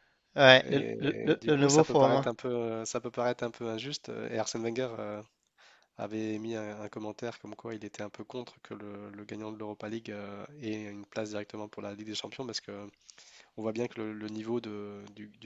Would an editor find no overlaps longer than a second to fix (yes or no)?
no